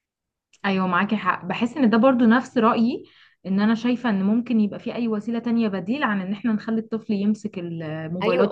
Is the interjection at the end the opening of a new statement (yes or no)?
yes